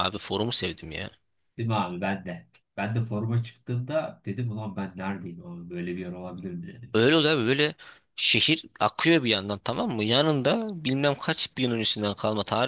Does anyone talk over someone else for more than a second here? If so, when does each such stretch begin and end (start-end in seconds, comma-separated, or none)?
none